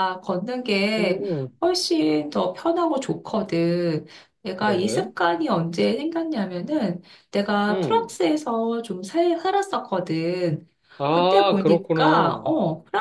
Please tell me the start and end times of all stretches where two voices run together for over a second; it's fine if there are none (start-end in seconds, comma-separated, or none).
11.1-12.5